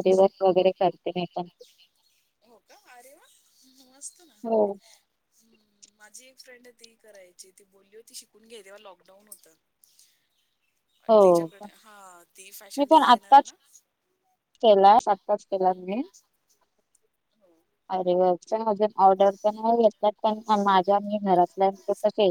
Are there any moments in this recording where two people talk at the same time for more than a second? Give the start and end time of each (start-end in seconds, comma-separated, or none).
none